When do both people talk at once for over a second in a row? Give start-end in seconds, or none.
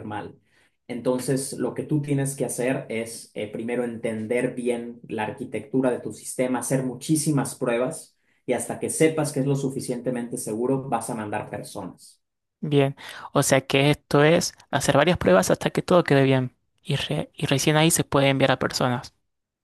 none